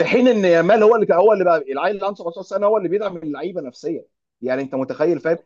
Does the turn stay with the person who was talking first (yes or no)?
yes